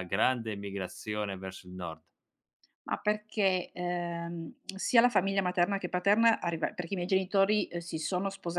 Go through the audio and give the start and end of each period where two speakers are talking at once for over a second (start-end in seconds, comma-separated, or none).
none